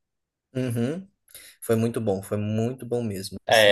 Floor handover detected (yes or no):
yes